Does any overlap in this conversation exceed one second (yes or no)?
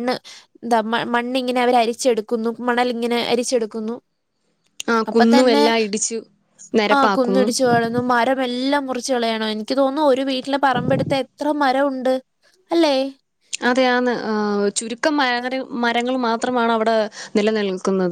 no